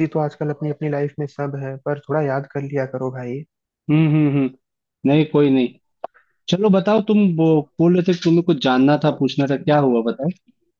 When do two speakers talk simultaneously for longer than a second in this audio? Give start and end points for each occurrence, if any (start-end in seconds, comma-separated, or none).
none